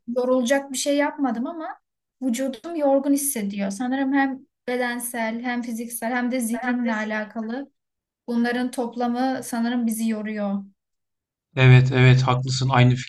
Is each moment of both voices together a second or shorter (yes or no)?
yes